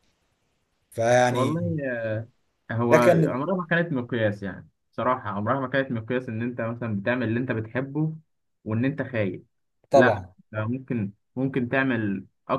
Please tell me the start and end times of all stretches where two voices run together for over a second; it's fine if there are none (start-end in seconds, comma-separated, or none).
none